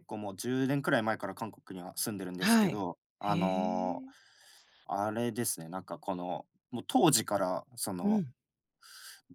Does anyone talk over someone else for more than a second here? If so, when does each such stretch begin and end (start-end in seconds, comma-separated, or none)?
2.4-4.0